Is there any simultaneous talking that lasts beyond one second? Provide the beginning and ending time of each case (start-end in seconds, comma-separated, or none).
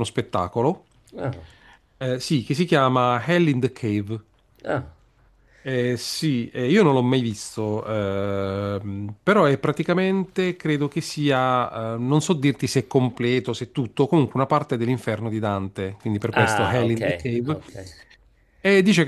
16.3-17.6